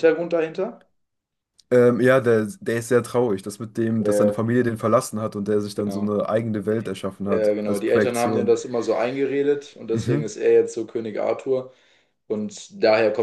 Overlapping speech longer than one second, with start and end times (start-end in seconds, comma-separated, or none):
7.2-8.6